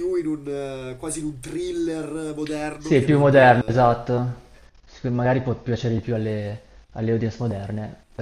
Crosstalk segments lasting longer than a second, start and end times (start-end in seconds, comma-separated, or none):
2.8-4.1